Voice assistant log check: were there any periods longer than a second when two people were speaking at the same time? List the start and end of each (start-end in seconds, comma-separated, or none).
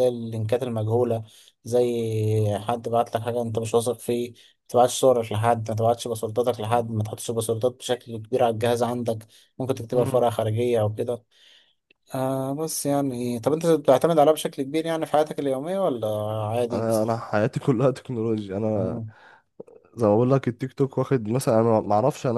none